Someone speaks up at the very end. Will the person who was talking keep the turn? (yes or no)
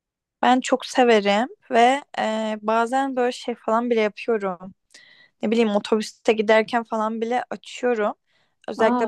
yes